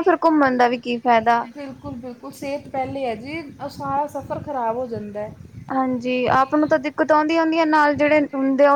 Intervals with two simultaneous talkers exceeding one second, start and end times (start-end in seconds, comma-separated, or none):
none